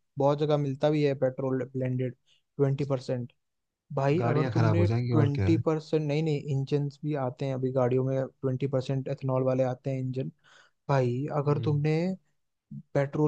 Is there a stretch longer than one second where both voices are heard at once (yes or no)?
yes